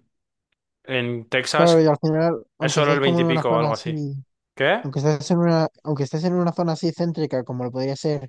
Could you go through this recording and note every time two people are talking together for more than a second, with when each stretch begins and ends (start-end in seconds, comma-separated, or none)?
2.6-4.0